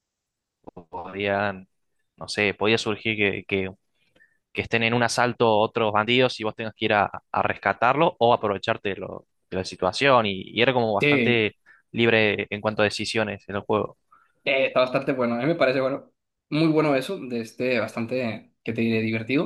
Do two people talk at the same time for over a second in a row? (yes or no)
no